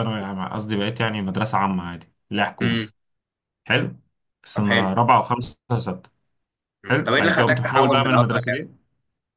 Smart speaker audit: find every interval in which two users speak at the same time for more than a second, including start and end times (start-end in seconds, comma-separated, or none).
6.8-8.6